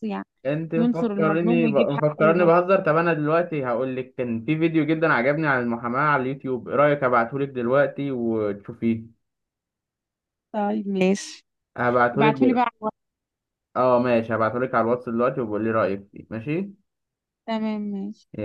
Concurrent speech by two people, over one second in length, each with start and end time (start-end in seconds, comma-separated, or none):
0.8-2.5